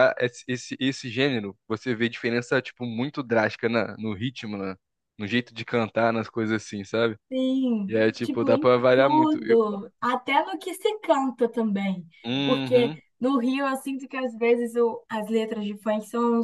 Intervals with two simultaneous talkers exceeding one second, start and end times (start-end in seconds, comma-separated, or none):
7.9-9.6